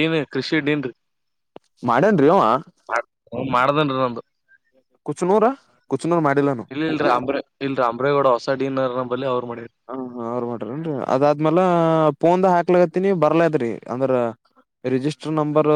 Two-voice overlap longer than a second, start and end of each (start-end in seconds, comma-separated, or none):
none